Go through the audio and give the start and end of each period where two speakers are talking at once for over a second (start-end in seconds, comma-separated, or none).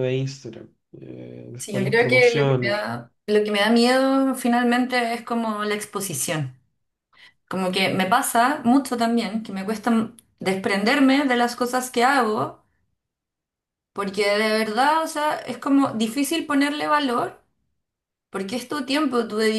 1.6-2.8